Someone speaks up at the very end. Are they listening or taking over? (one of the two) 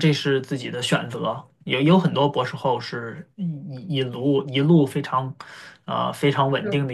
listening